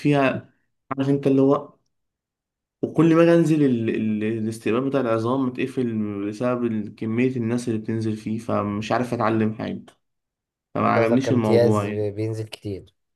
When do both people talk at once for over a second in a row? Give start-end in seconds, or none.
10.8-12.1